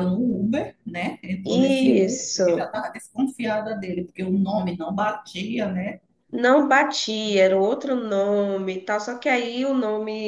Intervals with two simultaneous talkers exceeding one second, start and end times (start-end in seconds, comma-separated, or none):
1.4-2.8